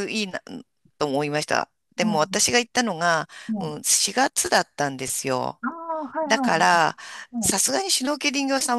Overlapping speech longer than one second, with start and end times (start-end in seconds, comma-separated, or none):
none